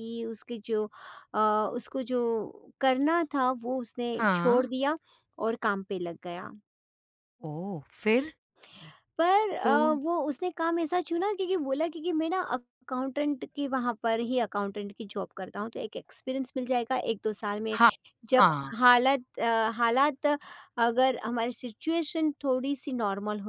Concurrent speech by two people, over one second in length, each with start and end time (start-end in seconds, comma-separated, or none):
none